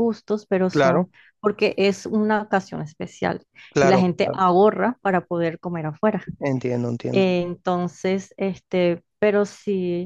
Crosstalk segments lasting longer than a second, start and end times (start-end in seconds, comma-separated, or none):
none